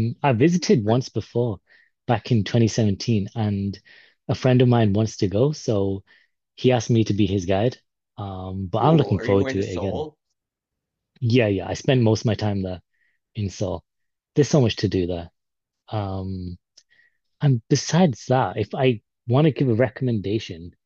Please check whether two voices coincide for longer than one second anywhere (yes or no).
yes